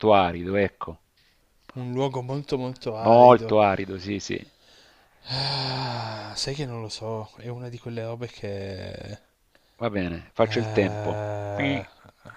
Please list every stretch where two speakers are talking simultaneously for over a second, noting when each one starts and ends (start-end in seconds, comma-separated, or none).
10.4-11.8